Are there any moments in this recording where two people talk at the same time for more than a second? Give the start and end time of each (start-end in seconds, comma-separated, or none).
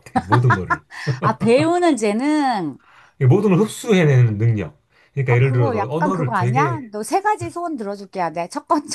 5.3-6.8